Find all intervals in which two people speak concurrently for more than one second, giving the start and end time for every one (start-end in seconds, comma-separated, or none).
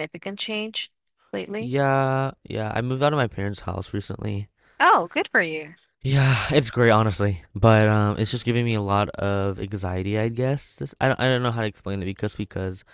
none